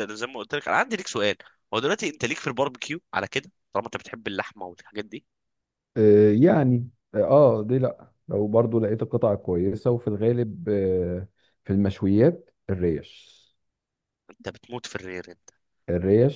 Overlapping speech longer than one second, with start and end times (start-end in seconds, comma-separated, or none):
none